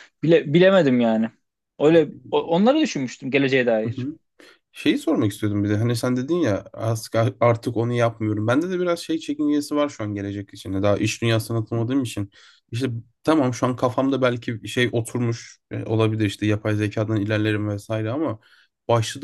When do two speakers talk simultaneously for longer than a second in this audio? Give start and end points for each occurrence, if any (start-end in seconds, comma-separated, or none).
none